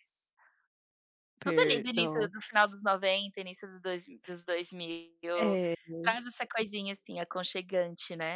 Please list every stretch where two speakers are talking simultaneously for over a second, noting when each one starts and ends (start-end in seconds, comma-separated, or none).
1.4-2.7